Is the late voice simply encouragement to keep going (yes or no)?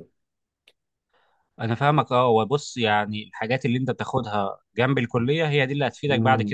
yes